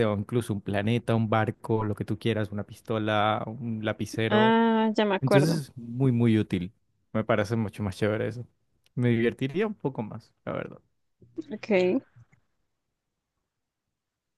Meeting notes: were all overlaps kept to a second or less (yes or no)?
yes